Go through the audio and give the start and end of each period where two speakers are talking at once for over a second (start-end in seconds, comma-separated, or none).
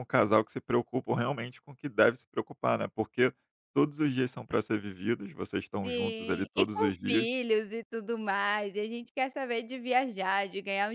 5.8-7.3